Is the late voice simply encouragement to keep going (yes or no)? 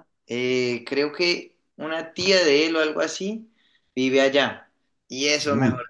yes